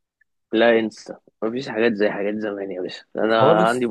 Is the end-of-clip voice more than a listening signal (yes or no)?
no